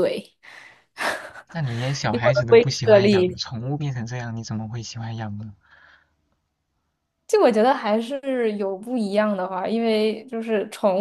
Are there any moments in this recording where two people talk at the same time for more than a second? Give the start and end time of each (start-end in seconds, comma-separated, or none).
2.1-3.4